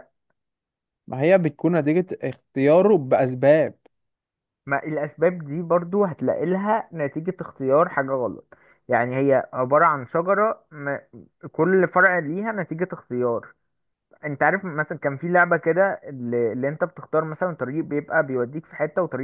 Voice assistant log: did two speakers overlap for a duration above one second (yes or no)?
no